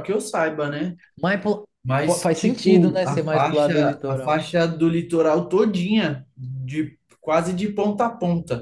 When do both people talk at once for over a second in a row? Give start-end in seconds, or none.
2.0-4.5